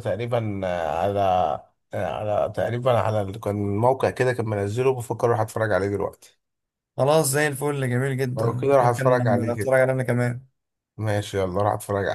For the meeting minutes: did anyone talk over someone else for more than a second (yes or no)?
yes